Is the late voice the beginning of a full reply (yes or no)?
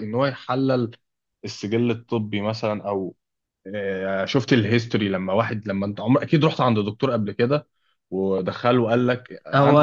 yes